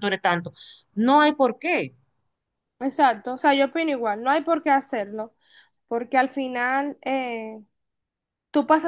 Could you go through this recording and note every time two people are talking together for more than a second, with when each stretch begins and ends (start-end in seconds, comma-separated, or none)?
none